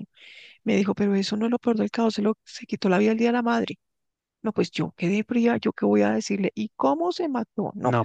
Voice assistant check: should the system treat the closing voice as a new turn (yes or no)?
yes